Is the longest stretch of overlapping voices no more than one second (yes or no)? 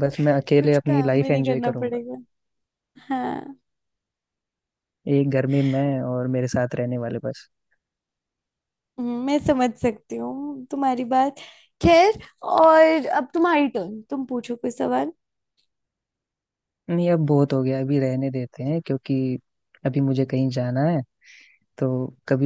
no